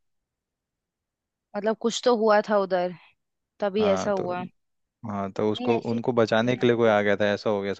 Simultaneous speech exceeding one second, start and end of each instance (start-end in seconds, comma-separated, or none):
5.5-7.2